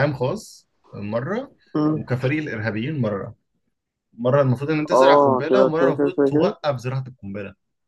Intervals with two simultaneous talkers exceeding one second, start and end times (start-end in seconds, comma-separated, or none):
4.9-6.5